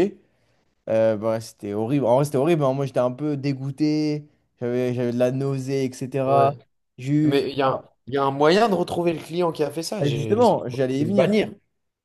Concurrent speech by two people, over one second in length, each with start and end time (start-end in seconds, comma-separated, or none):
10.0-11.4